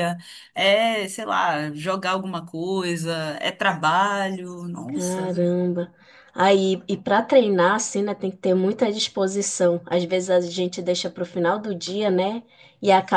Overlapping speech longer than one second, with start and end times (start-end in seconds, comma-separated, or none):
none